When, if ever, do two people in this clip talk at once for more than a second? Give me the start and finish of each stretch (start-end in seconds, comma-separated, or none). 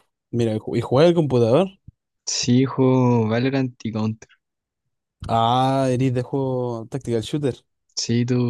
none